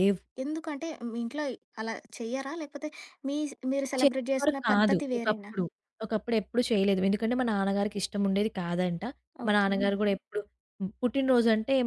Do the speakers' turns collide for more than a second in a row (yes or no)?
yes